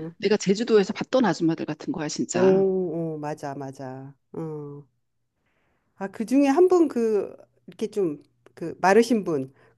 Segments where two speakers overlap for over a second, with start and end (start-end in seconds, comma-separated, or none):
none